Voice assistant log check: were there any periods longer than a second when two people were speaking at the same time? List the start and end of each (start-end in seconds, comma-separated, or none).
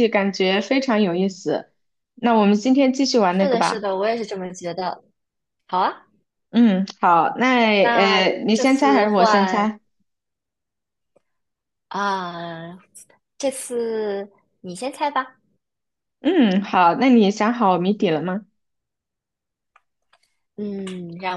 7.9-9.7